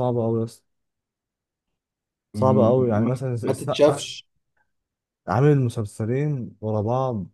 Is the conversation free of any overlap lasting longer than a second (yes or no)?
no